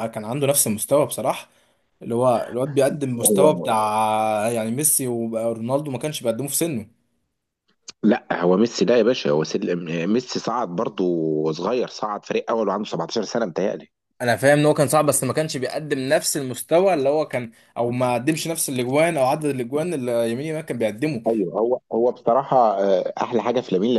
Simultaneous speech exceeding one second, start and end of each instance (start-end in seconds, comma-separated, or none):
none